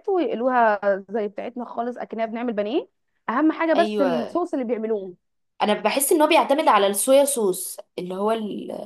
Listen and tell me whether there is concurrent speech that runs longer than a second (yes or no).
no